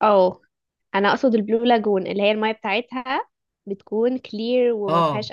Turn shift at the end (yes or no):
yes